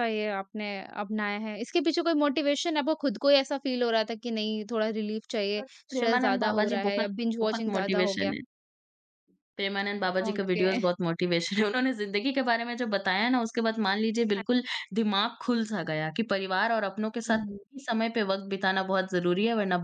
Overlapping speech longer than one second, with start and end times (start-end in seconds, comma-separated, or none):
5.6-8.3